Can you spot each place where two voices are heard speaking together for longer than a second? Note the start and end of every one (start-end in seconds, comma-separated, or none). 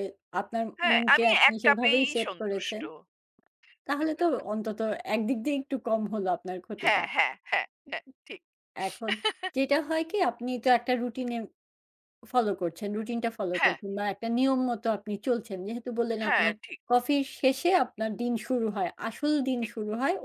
0.8-2.8